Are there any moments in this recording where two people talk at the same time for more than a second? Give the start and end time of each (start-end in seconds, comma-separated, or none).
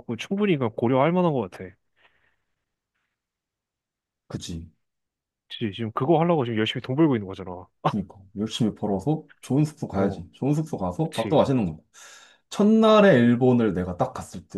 none